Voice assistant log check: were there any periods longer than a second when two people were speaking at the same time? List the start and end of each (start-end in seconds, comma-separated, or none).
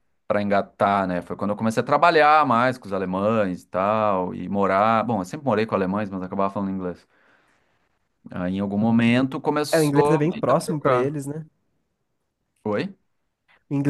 9.7-11.1